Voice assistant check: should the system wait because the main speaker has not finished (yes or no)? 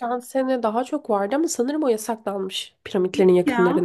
yes